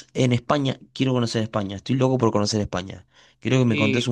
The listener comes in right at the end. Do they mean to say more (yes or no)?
no